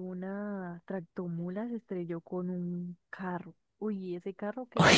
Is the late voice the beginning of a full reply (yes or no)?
no